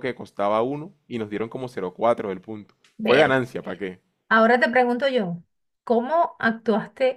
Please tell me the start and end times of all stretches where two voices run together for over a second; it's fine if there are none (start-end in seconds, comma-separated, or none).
none